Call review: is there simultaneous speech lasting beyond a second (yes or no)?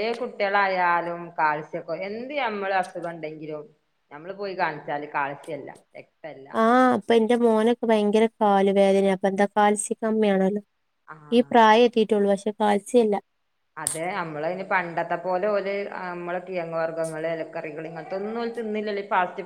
no